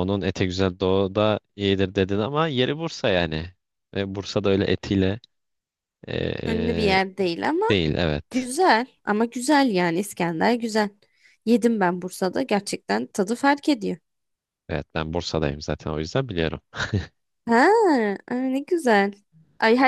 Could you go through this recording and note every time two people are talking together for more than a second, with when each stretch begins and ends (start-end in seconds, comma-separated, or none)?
none